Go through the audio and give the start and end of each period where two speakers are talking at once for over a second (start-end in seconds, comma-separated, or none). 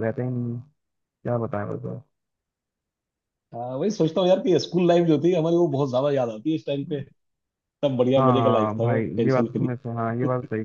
8.2-9.7